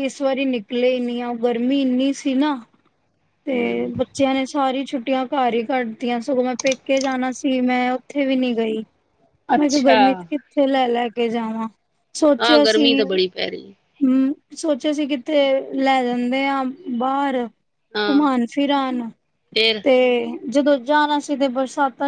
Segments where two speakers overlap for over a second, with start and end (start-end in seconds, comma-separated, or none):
none